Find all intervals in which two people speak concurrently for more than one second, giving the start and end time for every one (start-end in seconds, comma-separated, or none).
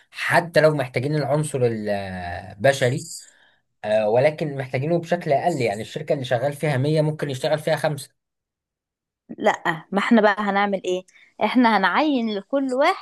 none